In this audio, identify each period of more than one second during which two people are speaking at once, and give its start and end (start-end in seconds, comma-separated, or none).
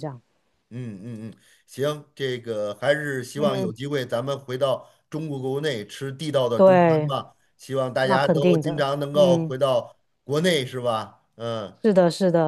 8.0-9.6